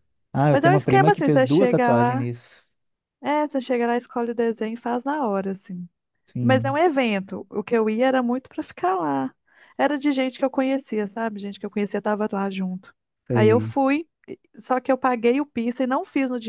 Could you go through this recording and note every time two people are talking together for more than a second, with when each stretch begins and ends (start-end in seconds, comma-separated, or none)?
0.5-2.3